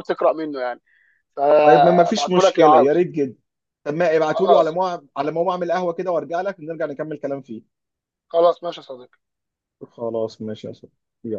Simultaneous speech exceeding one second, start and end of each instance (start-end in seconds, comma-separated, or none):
1.6-3.1